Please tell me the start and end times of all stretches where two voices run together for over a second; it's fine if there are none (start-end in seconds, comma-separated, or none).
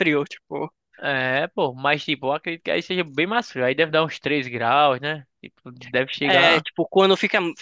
none